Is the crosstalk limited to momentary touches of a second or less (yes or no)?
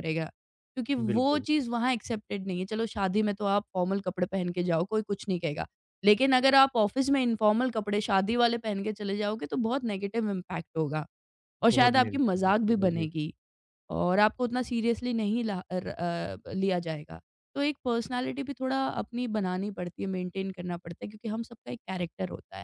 no